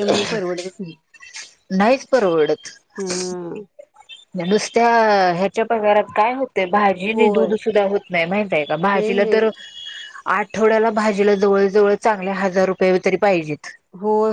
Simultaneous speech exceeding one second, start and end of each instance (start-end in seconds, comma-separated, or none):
none